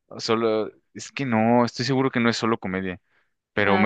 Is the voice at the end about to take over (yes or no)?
no